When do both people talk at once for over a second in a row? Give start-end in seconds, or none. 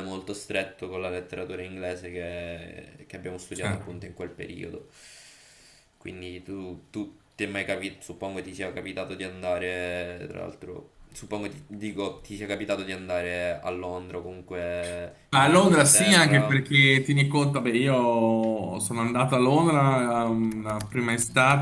15.3-16.6